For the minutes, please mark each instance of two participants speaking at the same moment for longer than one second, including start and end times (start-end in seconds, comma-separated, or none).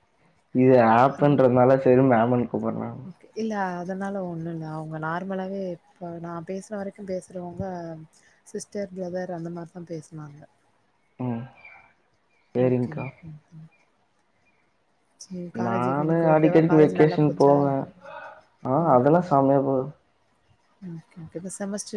15.9-17.6